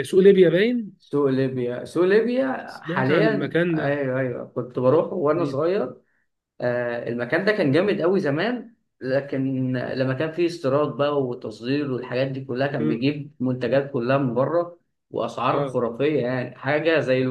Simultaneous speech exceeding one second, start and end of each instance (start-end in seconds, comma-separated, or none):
2.6-4.0